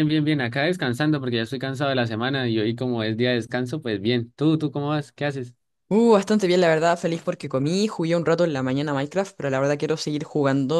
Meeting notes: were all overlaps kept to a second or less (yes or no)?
yes